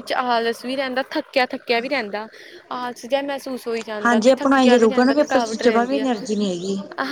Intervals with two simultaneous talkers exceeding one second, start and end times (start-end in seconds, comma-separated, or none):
4.0-6.1